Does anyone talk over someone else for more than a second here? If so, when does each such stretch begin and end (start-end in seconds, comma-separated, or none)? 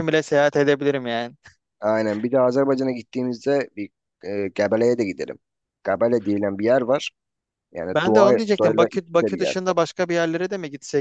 7.9-9.6